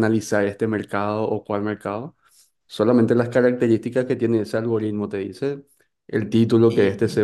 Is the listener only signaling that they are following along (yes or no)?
yes